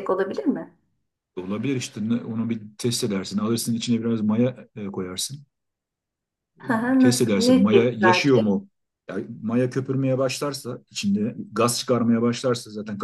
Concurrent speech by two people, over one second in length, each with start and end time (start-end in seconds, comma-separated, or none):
7.0-8.6